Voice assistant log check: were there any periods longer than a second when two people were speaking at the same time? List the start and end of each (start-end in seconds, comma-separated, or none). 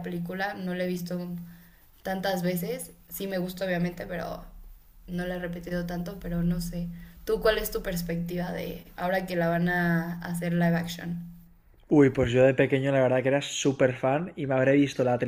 none